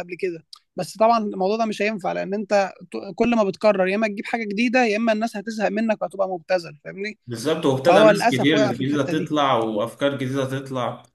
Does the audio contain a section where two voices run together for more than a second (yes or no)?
yes